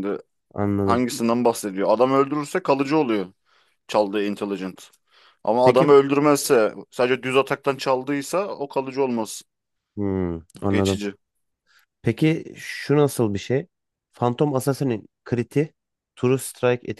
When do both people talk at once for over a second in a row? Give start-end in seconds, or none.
none